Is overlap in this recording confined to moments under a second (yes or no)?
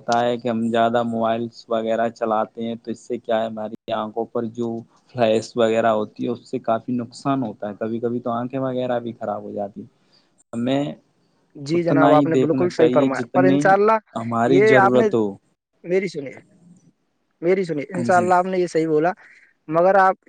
yes